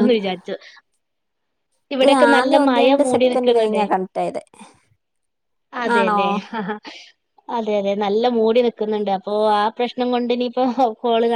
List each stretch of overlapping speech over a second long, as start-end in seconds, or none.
2.0-3.8